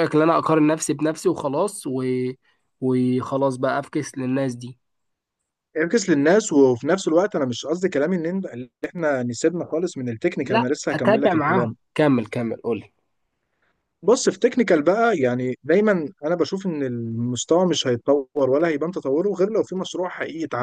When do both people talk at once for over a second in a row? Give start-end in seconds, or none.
10.4-11.8